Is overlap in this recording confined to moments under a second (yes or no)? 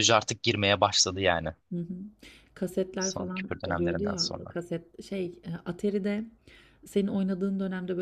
no